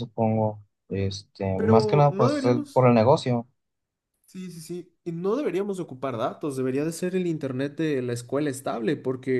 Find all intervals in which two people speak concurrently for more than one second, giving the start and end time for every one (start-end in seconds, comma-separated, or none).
1.6-2.9